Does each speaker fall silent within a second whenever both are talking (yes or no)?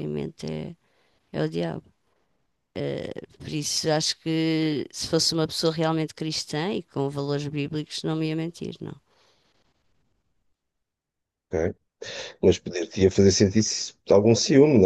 yes